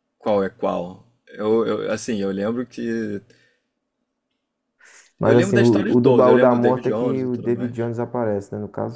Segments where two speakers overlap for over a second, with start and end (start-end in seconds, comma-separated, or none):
5.2-7.8